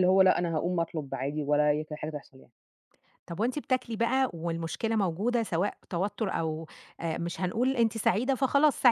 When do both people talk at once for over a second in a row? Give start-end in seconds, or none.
none